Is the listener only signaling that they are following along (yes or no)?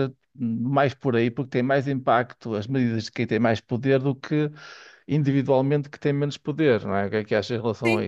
no